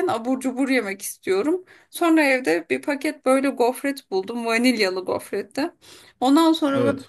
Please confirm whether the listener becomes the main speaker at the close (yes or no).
no